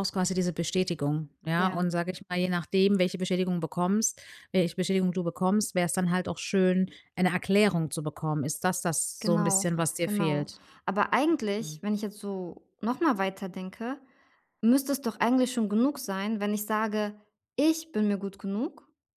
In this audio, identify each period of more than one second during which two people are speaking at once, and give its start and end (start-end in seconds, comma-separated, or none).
9.2-10.6